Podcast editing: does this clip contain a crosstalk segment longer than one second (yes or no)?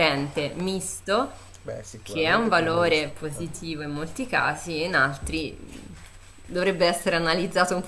yes